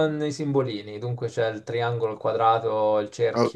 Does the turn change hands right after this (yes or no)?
yes